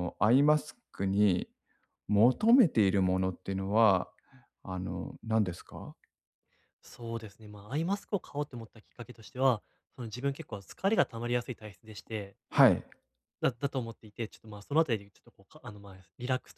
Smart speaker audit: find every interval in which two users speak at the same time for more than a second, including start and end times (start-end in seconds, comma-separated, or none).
none